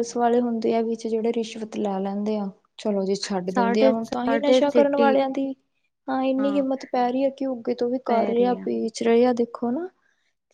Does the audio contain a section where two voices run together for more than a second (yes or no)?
yes